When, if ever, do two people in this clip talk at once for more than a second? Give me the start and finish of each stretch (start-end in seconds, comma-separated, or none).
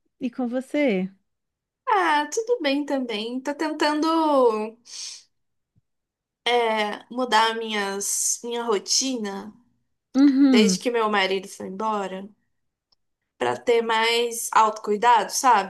none